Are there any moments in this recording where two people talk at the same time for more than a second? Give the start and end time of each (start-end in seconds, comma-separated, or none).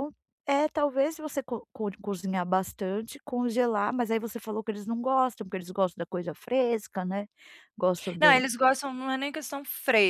none